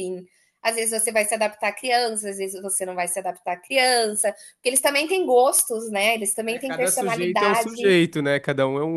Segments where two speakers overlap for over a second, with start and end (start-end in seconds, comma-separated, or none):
6.4-8.0